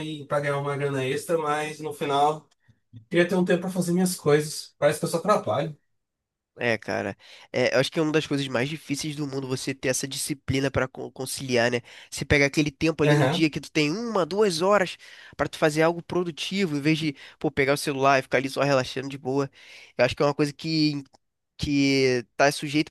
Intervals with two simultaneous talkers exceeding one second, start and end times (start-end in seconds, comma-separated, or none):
none